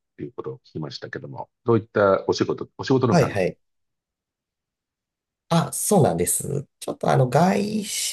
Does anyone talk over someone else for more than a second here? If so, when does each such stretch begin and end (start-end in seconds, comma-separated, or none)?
none